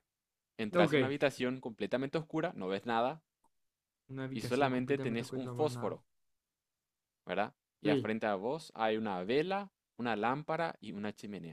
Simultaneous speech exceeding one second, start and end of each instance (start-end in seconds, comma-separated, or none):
4.3-6.0